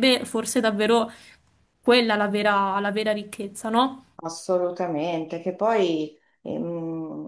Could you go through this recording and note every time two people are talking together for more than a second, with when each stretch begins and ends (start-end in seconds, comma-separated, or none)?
none